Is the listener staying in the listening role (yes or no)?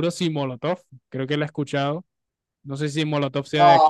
yes